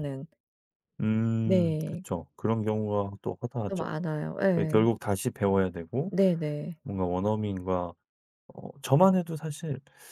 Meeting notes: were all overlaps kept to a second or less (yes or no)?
yes